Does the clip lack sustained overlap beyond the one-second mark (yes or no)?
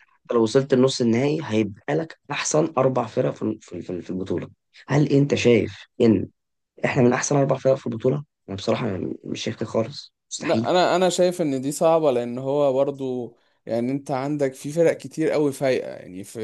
yes